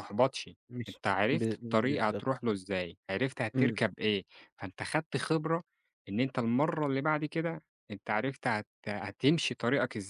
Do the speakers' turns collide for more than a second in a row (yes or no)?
yes